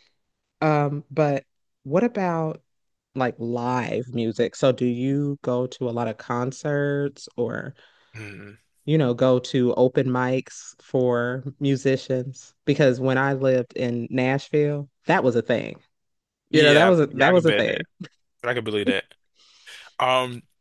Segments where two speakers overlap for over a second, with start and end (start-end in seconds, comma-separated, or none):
16.5-17.8